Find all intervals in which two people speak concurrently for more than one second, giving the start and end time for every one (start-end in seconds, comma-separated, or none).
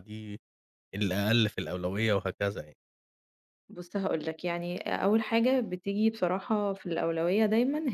none